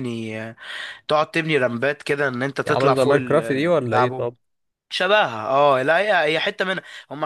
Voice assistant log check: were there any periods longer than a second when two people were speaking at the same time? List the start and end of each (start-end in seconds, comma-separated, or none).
2.6-4.3